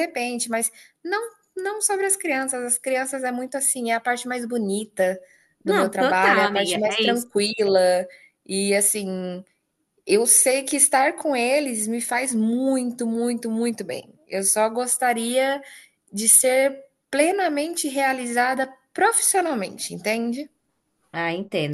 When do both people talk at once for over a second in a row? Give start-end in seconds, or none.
5.7-7.3